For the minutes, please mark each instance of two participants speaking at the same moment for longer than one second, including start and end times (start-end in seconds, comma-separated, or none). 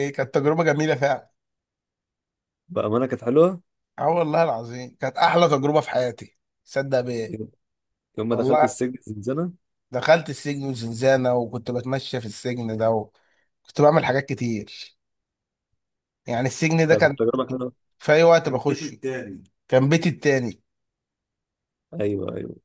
none